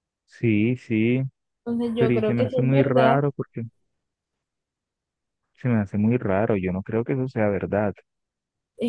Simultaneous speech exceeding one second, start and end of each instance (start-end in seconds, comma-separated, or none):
1.9-3.2